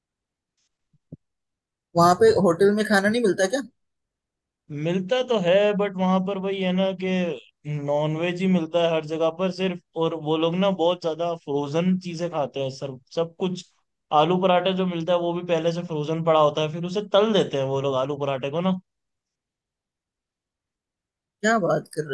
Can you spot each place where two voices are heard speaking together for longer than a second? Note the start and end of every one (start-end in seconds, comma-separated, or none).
none